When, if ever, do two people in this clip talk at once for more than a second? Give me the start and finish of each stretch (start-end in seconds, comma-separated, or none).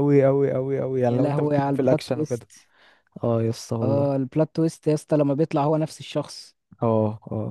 1.0-2.5